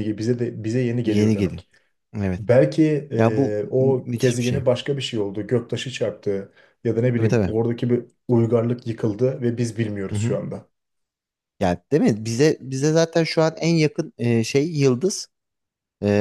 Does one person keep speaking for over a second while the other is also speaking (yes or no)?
yes